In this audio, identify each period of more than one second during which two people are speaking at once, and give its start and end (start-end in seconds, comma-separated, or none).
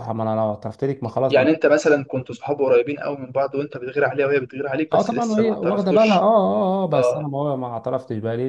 4.9-6.3